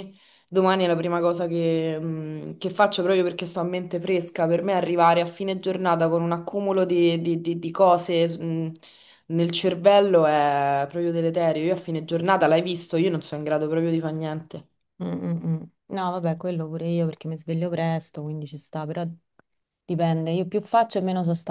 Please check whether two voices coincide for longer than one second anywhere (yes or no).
no